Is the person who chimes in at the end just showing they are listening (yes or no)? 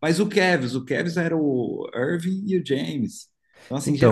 no